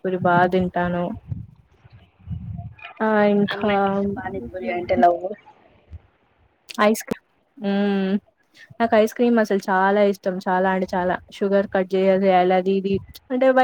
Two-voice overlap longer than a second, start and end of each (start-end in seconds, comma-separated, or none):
none